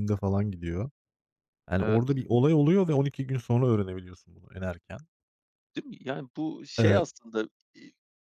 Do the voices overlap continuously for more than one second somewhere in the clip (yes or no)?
no